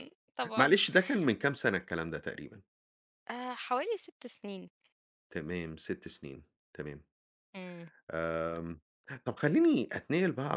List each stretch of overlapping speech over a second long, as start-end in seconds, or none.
none